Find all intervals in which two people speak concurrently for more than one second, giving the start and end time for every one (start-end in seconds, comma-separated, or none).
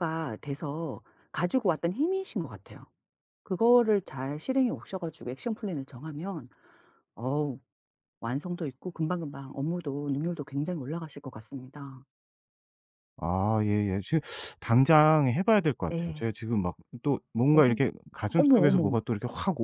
none